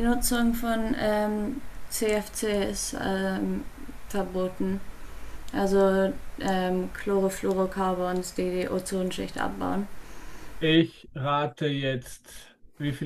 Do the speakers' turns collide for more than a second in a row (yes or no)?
no